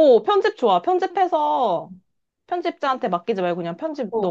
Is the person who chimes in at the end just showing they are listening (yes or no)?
no